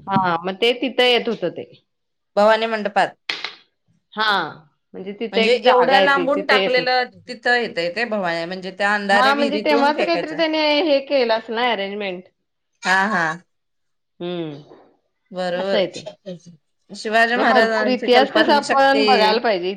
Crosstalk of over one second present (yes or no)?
yes